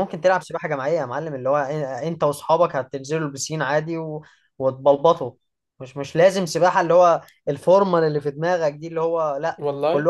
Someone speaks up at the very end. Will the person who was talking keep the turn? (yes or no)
yes